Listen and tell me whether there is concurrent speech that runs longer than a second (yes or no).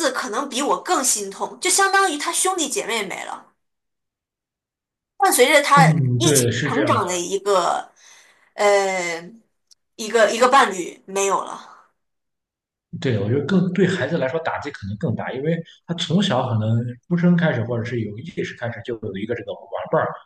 yes